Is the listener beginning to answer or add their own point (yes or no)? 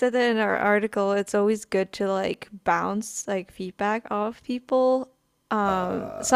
no